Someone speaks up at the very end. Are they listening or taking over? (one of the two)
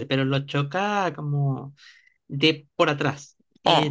listening